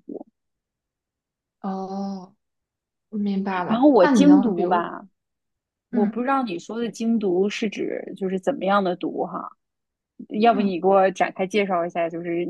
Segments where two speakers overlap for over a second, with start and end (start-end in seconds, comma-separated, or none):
3.7-4.9